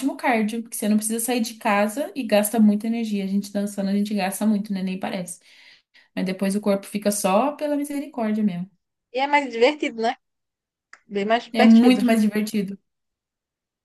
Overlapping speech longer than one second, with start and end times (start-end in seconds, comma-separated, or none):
none